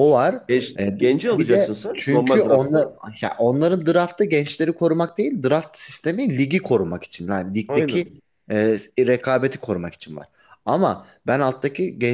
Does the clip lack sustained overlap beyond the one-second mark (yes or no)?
no